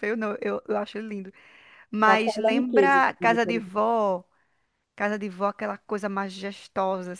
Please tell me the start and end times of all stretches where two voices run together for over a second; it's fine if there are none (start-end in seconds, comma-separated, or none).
2.1-3.6